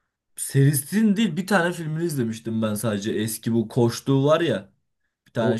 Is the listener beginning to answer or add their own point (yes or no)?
yes